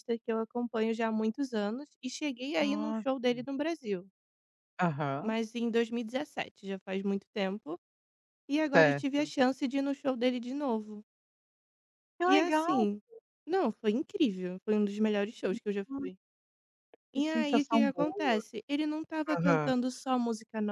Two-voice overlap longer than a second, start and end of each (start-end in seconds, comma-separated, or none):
17.1-18.4